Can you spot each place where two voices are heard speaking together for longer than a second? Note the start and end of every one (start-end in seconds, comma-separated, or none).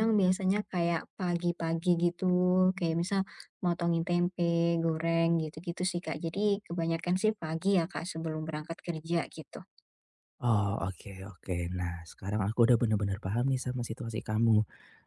none